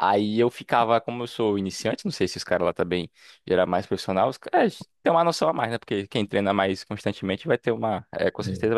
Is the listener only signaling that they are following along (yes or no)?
yes